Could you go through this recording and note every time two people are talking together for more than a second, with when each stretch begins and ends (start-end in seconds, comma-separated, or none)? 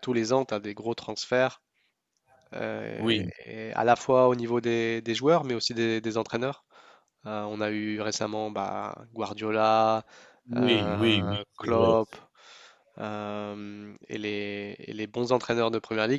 10.6-11.9